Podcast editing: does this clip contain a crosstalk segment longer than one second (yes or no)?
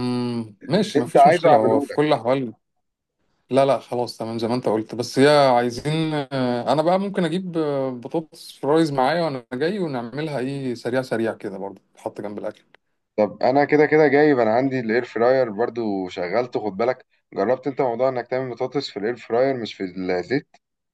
yes